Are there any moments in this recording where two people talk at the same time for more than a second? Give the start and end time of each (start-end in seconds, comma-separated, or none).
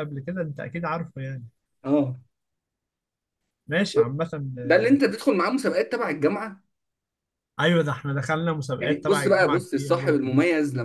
8.8-10.3